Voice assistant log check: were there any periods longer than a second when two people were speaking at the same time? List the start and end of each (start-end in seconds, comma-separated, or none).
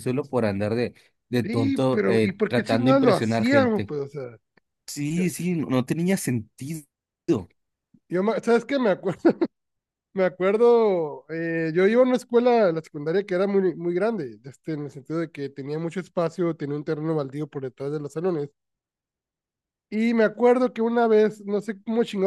1.4-3.9